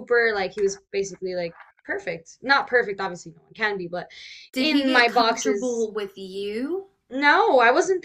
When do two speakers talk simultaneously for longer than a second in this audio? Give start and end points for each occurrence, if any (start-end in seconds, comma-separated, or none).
4.6-5.9